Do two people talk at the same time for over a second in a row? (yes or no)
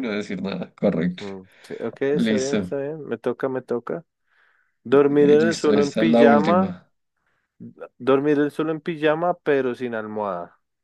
yes